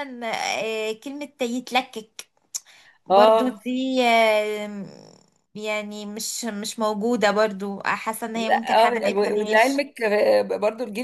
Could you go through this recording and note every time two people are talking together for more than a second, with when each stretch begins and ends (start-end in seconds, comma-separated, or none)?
8.5-9.8